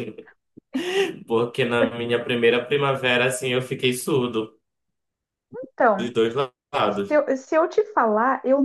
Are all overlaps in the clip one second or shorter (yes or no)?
yes